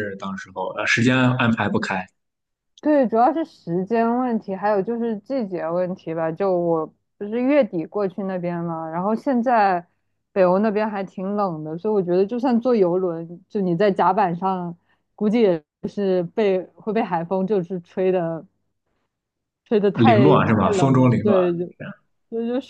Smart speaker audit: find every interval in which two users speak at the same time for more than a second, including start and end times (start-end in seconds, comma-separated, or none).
19.9-21.4